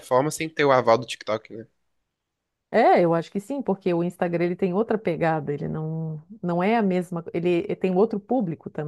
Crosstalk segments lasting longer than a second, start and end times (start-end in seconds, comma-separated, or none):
none